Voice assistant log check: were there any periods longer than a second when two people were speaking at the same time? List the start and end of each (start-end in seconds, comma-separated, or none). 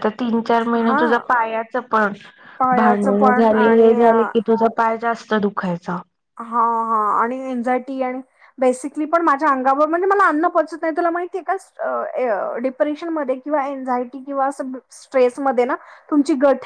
2.8-4.3